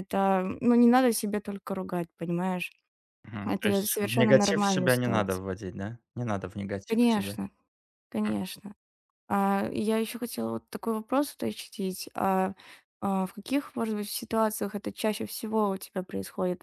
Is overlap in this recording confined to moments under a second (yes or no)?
no